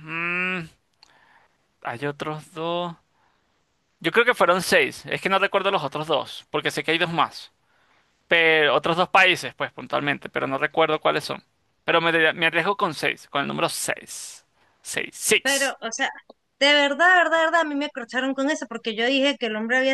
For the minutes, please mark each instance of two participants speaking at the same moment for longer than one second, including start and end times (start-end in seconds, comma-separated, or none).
none